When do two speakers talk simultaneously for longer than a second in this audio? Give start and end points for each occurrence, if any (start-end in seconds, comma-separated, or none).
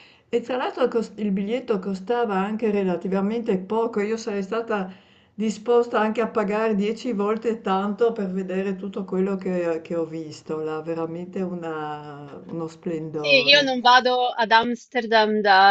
none